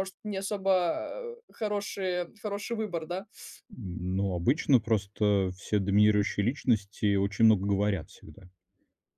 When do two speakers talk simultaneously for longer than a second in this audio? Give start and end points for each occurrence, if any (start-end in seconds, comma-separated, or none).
none